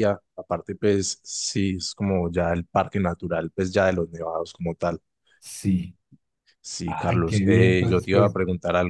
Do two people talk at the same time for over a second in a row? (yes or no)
yes